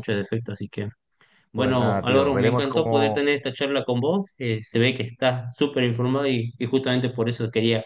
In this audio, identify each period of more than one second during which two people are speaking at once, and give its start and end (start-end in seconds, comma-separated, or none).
1.5-3.2